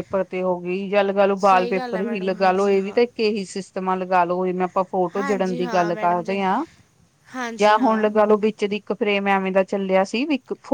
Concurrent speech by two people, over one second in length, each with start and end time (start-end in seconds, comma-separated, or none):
1.4-3.0, 5.2-6.4